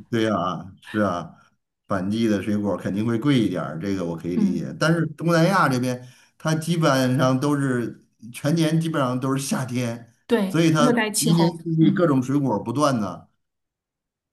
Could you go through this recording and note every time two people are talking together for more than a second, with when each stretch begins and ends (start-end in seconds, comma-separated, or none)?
10.5-12.1